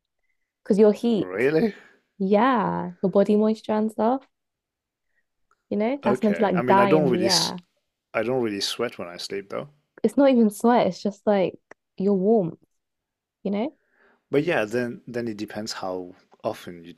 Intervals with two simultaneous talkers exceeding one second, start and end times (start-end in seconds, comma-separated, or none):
6.0-7.5